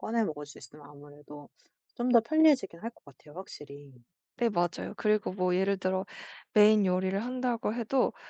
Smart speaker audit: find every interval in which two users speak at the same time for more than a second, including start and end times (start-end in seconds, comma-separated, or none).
none